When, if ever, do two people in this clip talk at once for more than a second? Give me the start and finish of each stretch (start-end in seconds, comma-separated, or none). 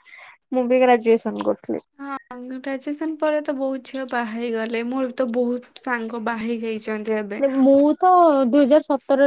none